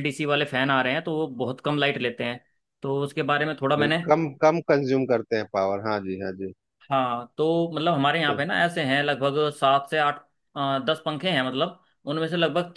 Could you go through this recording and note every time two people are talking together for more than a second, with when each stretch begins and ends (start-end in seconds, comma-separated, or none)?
none